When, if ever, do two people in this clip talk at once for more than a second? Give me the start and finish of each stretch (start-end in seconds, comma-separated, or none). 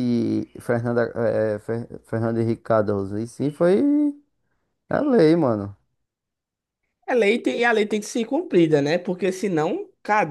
none